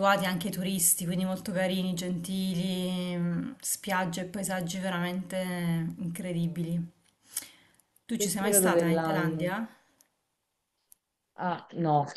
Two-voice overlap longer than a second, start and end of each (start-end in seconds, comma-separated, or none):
8.1-9.5